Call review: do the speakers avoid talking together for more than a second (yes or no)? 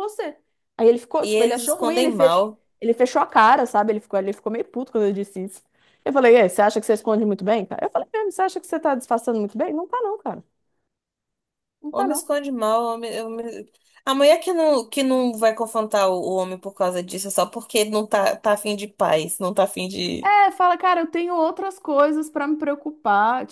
no